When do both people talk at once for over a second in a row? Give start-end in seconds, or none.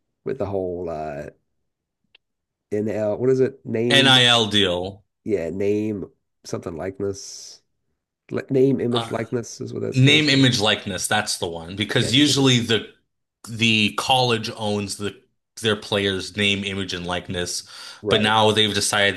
none